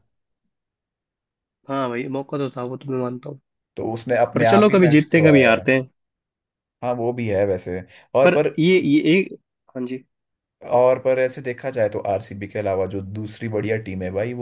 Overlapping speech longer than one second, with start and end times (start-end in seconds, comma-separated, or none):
4.3-5.7